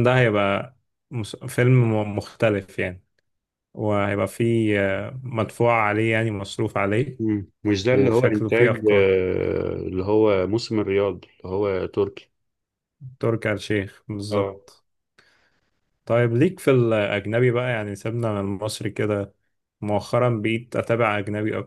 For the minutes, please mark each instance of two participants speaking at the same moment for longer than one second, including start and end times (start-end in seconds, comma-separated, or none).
7.9-9.1